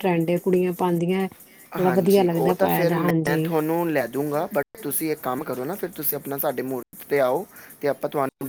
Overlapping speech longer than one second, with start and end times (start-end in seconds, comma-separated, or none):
1.8-3.5